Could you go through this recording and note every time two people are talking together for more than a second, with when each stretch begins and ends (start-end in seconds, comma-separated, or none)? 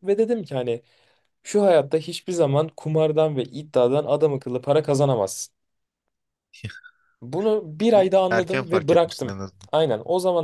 7.9-9.7